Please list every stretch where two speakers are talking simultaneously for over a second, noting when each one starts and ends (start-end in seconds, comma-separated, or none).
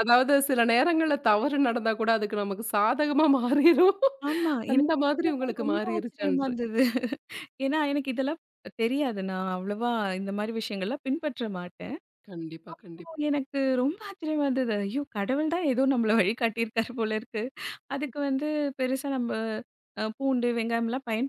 4.7-6.5